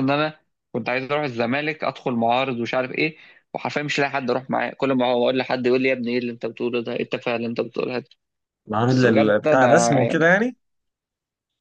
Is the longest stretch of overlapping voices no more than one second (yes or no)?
no